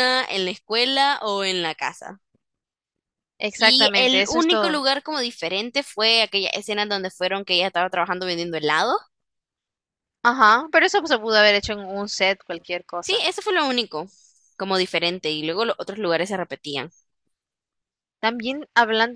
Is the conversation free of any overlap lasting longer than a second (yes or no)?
no